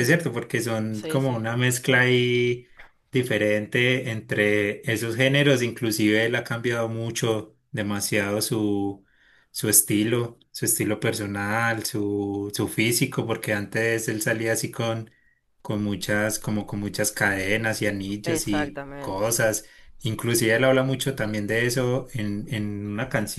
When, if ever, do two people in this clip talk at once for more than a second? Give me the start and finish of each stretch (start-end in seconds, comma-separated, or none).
18.2-19.5